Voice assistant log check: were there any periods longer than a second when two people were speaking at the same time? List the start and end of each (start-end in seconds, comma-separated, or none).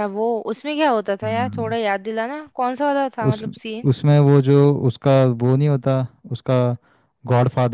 none